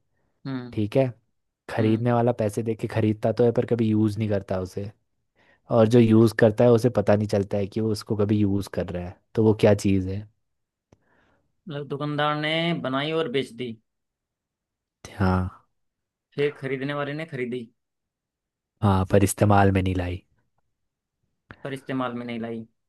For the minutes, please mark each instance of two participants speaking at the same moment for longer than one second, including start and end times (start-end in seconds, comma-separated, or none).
none